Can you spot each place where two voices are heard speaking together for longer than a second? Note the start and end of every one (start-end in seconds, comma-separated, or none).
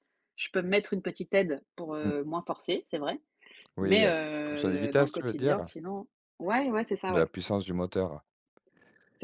3.8-5.7